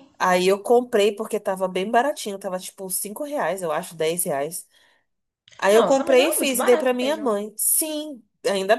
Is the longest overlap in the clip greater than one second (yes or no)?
yes